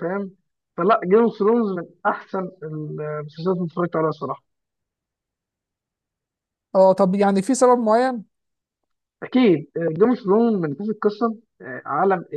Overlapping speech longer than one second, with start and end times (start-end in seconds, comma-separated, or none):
none